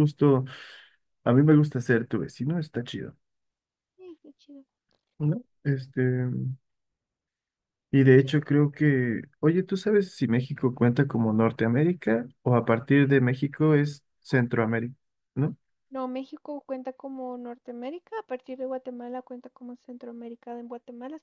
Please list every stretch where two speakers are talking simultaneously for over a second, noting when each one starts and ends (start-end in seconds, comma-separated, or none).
none